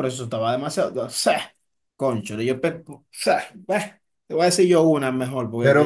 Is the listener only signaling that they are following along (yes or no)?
no